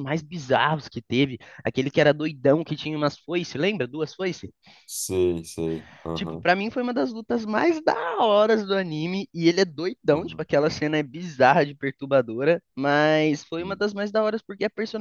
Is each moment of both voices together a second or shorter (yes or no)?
yes